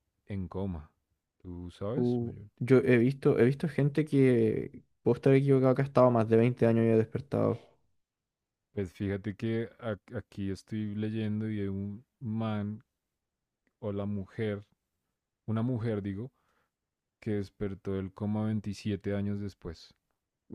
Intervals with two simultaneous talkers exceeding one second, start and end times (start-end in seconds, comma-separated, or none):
none